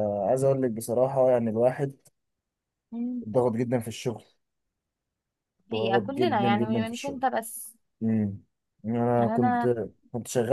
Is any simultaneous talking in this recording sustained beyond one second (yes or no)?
yes